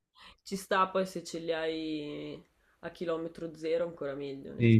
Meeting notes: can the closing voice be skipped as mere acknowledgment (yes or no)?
no